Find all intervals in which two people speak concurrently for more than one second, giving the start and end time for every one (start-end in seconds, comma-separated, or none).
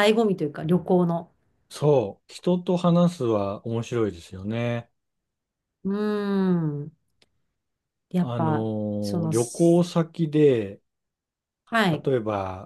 none